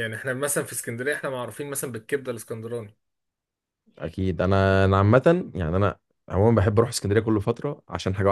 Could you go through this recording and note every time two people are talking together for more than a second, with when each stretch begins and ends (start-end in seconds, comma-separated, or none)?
none